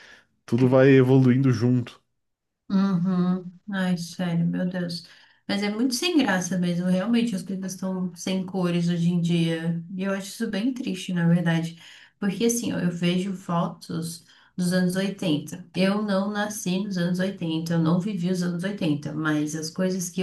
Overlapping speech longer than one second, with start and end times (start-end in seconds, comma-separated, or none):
none